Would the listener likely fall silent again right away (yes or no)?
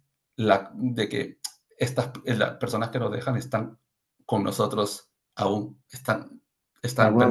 no